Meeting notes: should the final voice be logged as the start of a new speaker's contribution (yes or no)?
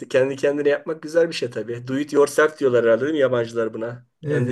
yes